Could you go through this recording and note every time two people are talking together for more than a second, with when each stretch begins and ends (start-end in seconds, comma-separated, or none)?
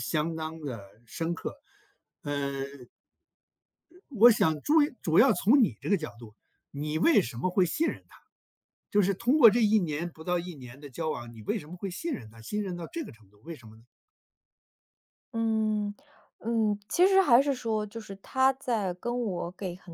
none